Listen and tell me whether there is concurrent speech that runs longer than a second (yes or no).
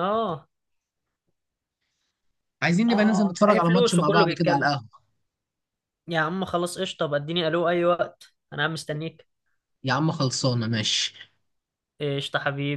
yes